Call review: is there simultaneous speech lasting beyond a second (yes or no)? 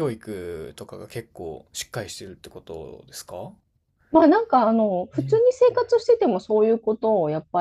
no